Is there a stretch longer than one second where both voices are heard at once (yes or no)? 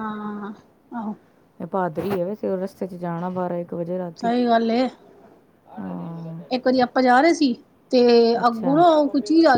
no